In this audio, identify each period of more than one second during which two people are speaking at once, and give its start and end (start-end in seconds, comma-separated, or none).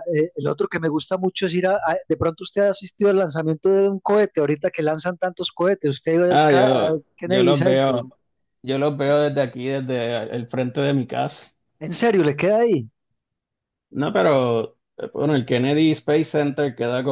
6.3-8.0